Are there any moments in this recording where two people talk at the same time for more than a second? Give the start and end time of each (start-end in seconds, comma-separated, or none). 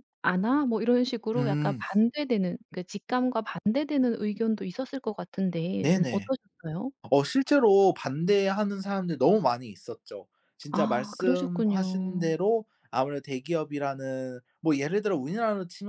10.7-12.4